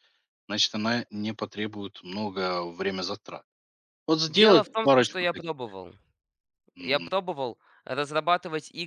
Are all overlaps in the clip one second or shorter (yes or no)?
no